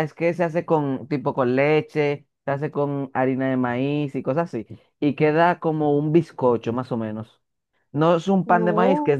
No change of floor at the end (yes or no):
yes